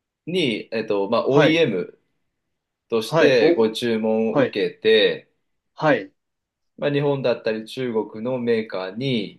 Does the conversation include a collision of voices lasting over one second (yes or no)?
no